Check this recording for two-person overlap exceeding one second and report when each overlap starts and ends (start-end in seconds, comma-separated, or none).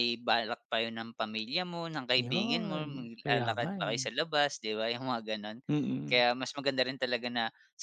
2.2-4.0